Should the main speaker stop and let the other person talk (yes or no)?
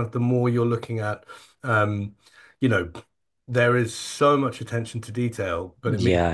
no